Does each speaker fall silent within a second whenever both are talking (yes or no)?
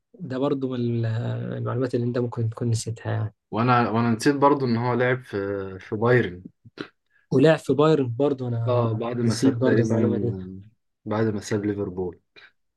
no